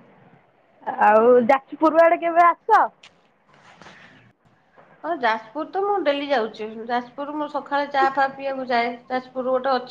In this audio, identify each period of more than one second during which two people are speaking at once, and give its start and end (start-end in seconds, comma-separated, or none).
none